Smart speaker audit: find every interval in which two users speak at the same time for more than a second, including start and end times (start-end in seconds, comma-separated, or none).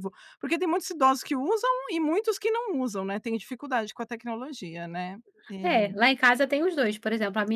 none